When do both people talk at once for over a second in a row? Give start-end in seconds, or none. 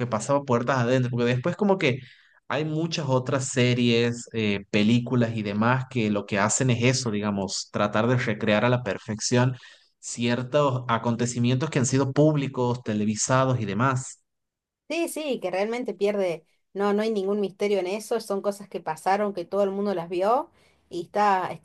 none